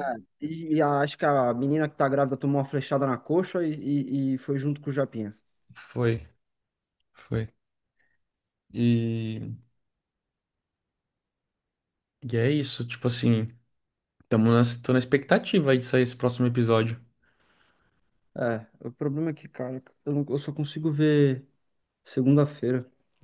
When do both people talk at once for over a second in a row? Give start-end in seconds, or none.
none